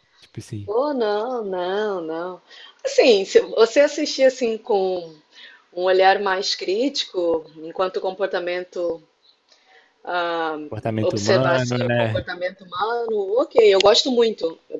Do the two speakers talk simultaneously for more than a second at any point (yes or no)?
yes